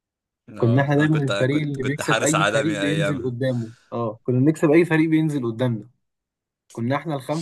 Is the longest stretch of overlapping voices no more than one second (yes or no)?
no